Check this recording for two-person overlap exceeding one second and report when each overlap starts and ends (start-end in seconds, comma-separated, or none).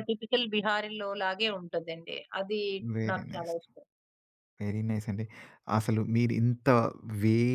none